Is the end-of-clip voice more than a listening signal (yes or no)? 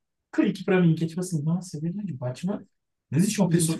yes